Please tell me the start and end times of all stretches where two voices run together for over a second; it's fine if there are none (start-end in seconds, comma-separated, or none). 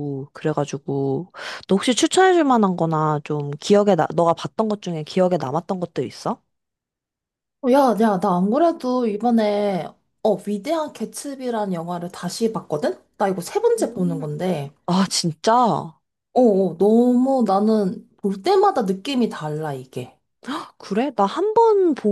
none